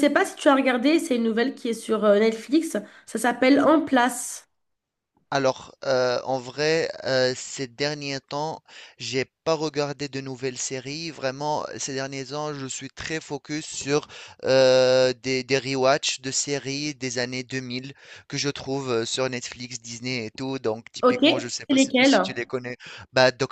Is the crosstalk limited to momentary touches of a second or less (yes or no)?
no